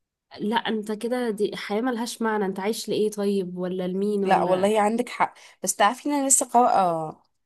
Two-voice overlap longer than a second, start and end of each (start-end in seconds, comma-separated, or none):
none